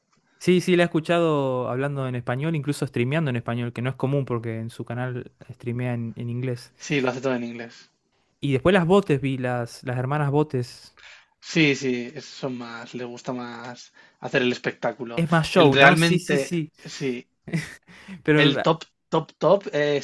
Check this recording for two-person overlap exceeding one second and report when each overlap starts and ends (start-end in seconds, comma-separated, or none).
15.2-16.7